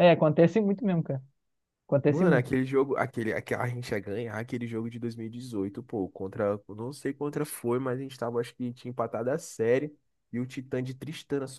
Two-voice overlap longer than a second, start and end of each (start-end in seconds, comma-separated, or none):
none